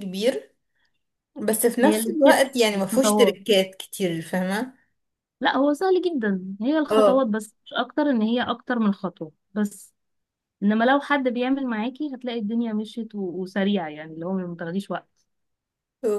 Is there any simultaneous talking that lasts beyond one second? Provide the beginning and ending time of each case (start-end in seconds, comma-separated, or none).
1.8-3.4